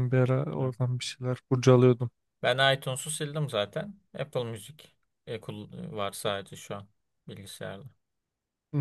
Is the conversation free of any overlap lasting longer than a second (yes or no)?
yes